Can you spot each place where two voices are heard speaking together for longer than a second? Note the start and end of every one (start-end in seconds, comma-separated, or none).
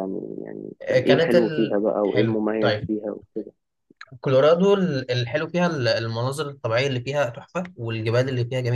0.8-2.9